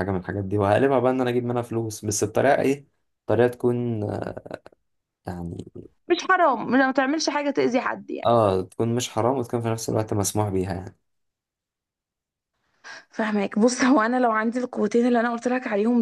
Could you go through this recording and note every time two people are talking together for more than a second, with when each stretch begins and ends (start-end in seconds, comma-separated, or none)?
none